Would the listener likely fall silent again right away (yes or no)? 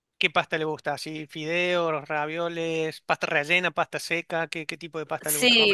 no